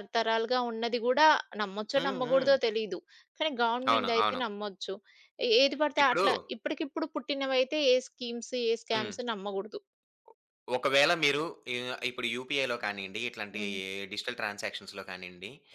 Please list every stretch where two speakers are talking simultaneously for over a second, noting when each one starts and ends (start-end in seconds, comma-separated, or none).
none